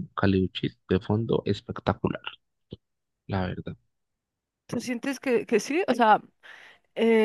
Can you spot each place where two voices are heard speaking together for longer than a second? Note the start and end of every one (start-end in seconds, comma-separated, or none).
none